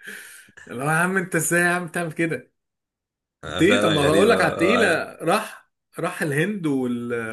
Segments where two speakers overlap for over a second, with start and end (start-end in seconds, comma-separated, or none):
3.6-5.1